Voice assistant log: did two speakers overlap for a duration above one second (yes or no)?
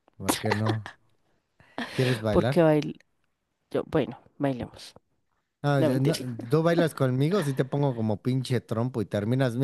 no